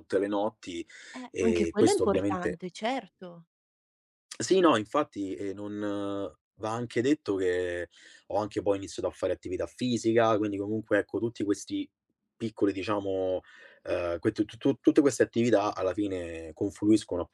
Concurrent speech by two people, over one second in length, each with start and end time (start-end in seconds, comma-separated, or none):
1.3-2.6